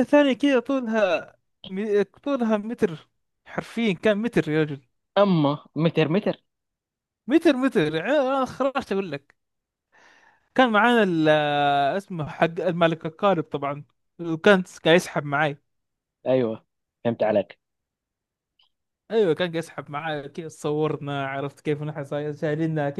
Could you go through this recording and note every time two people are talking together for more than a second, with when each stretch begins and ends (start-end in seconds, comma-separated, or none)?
none